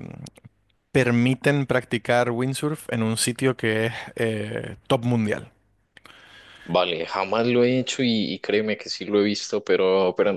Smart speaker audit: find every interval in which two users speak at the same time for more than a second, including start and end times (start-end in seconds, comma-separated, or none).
none